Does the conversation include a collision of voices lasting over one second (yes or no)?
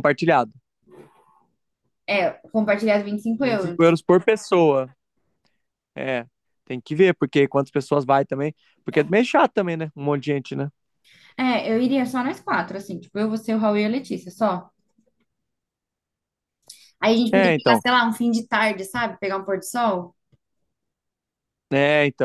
no